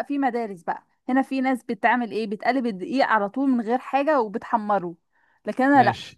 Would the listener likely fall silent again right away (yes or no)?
yes